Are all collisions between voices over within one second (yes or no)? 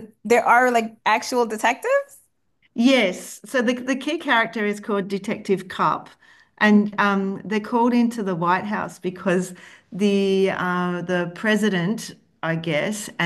yes